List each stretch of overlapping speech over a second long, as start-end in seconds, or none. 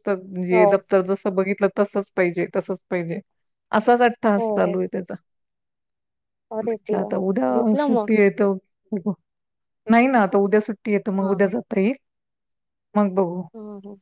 none